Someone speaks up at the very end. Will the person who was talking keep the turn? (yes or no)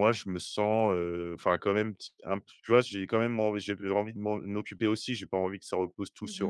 yes